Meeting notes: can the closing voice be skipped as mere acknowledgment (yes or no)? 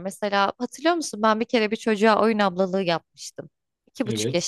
yes